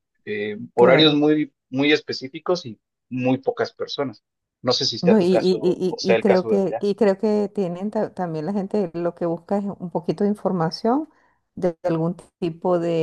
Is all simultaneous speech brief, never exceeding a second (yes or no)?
no